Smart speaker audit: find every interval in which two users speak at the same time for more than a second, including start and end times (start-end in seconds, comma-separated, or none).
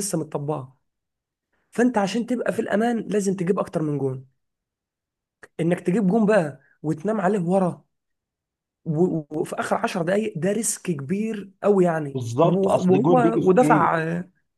12.1-13.9